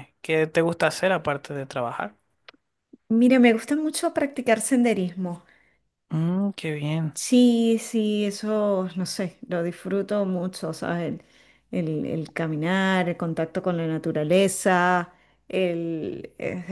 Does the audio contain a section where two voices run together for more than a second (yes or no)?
no